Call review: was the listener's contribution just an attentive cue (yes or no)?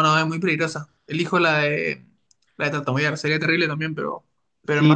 no